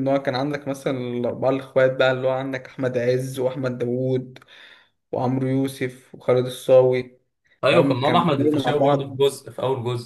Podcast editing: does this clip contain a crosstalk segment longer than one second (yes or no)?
yes